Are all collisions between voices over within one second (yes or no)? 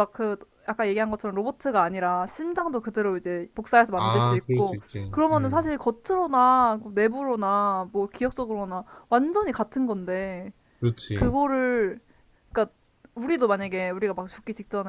no